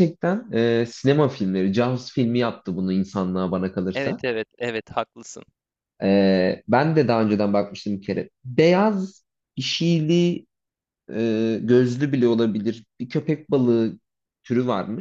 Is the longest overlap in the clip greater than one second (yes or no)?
no